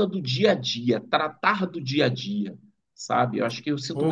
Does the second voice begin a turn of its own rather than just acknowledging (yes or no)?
yes